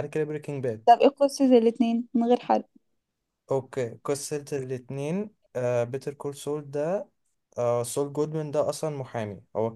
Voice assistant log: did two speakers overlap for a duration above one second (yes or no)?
no